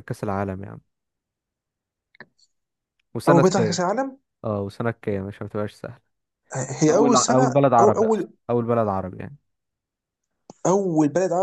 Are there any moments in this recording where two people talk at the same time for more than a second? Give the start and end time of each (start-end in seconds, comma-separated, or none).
6.9-8.3